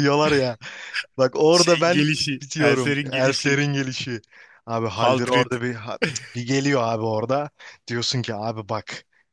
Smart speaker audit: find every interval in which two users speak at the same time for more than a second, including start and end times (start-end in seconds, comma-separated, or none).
1.5-3.6